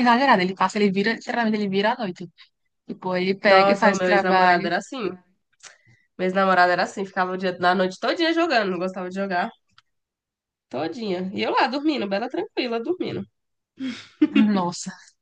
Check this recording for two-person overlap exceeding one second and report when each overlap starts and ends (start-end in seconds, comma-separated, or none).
3.5-4.7